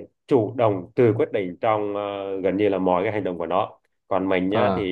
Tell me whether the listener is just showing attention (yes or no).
yes